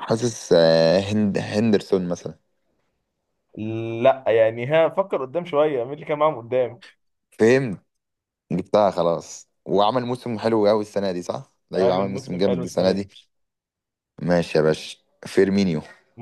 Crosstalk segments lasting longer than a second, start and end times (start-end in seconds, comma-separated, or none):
11.8-13.1